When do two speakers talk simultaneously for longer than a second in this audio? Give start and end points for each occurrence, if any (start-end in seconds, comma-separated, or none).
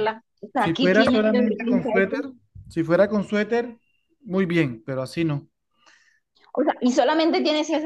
0.6-2.2